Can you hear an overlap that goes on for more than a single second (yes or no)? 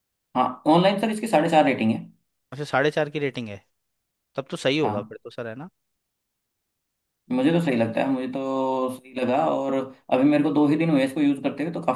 no